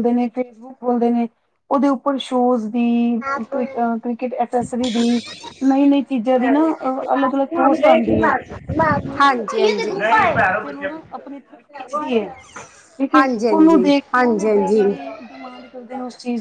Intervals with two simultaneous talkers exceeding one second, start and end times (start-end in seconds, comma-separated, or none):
13.1-15.0